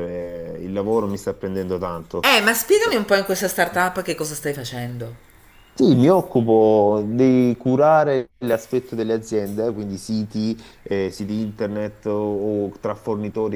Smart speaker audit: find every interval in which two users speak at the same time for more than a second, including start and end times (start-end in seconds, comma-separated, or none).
none